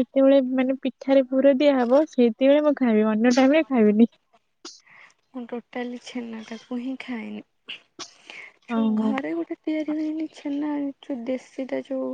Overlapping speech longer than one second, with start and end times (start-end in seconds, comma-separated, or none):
none